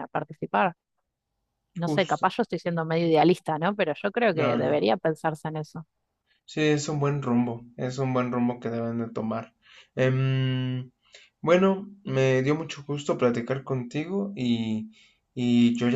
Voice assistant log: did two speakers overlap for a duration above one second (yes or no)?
no